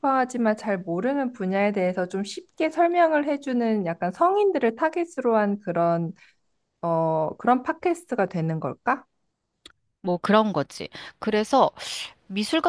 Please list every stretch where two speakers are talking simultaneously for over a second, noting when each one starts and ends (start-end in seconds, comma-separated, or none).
none